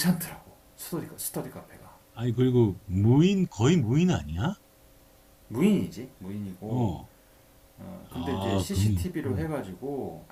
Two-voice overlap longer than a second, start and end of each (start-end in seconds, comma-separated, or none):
8.1-9.5